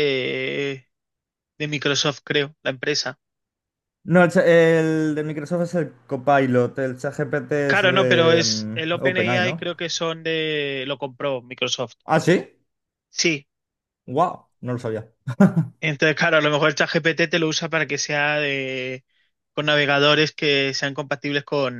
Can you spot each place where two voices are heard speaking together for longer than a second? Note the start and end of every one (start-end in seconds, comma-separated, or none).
7.7-9.6